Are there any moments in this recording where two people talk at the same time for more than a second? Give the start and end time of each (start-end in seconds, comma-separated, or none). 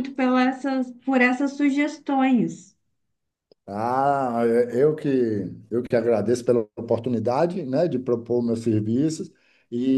none